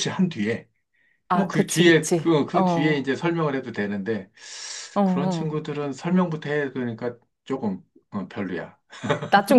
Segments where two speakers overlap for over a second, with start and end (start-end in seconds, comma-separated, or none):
1.3-3.1